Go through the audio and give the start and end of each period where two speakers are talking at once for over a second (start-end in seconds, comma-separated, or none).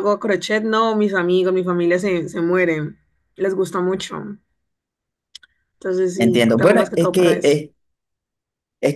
6.2-7.6